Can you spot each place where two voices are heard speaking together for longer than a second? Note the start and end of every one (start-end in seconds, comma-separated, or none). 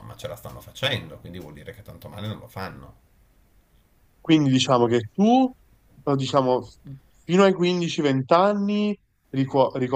none